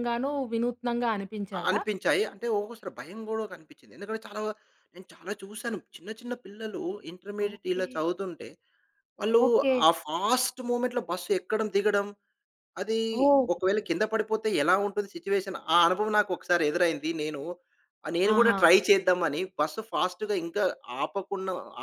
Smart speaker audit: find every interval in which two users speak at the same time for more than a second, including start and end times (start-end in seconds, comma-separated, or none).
none